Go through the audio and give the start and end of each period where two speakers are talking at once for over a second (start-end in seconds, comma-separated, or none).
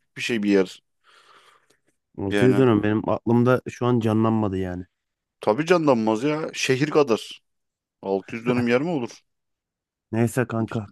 none